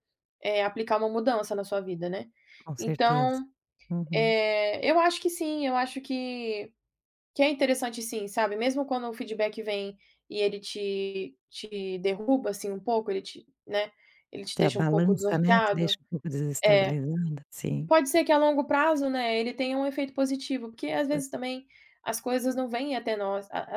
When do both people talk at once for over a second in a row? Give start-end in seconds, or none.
14.6-15.9